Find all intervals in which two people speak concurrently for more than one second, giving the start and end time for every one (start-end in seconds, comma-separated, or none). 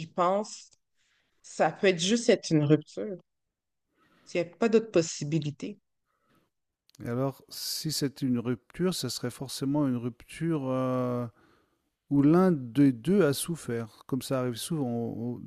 none